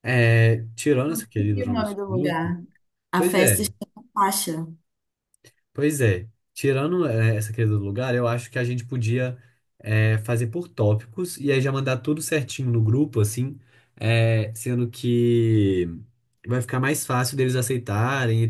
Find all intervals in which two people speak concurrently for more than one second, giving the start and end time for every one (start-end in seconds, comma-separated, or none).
1.1-2.5